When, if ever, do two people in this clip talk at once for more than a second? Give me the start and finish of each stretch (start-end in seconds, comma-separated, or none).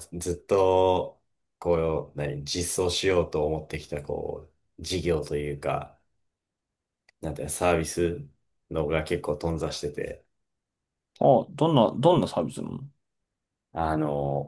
none